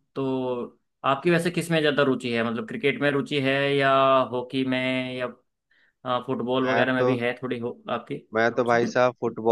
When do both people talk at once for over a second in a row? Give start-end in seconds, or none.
none